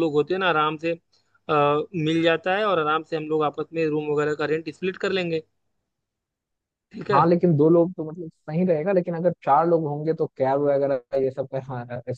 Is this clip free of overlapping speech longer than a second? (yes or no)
yes